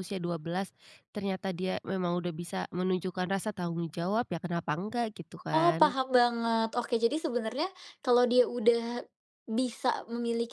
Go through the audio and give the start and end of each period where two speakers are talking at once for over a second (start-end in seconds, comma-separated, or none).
none